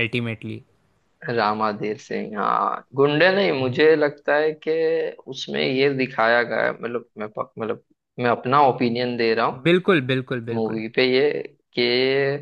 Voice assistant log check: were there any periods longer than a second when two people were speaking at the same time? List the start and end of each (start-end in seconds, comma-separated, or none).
none